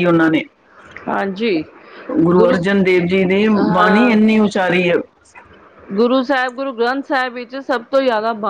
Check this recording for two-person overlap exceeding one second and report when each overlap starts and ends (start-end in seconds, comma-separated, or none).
none